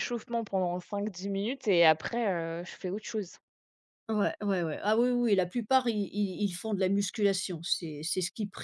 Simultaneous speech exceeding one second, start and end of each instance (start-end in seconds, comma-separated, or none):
none